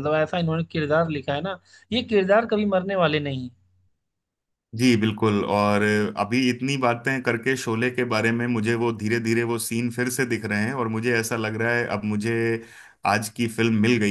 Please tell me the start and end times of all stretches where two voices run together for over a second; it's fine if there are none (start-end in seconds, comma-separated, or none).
none